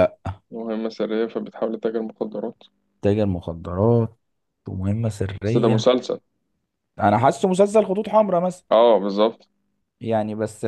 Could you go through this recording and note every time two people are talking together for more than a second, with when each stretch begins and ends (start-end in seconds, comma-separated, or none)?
none